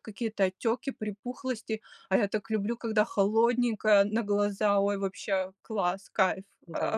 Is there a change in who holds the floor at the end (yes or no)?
yes